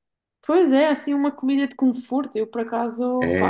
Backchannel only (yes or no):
no